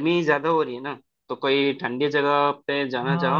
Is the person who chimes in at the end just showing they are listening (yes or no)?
no